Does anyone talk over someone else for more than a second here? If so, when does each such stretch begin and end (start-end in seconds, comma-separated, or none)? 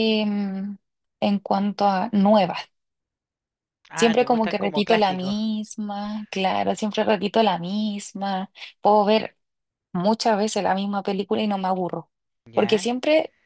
3.9-5.4